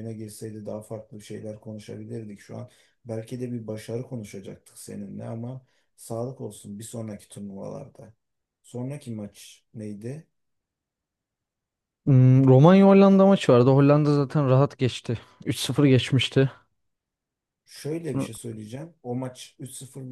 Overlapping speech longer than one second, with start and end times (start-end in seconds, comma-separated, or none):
none